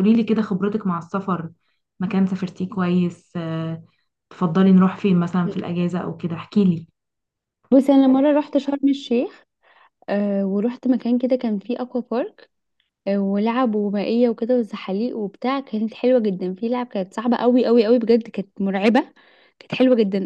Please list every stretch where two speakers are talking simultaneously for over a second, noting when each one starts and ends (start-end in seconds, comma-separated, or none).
none